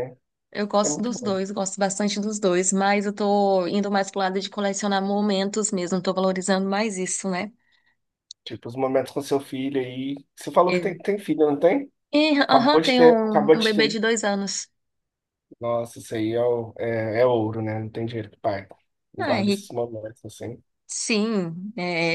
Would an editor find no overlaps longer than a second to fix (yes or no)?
no